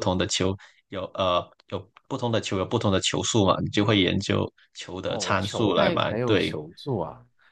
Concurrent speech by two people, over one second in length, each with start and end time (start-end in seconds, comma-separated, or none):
5.1-6.6